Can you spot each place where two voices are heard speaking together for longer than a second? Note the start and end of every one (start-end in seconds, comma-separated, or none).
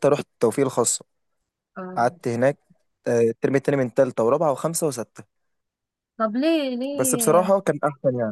none